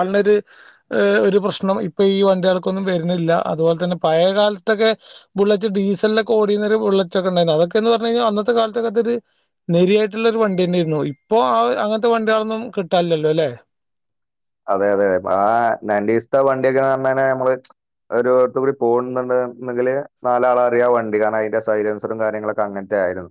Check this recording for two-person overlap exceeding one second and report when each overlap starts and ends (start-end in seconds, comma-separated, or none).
none